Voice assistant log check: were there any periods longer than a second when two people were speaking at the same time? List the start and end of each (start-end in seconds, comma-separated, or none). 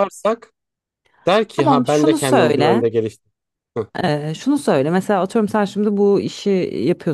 1.6-2.8